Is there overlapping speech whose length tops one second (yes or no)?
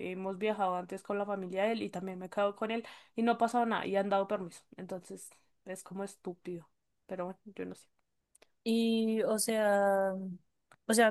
no